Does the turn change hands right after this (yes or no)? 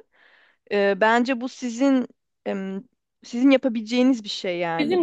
no